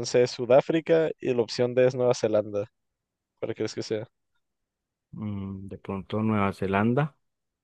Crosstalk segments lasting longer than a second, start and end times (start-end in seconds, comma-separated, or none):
none